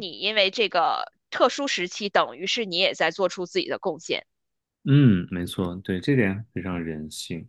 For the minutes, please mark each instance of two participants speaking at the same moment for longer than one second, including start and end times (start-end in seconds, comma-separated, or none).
none